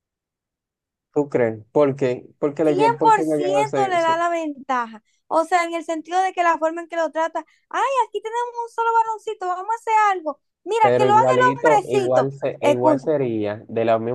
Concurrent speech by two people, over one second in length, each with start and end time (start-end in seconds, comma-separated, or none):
2.6-4.2, 10.8-13.1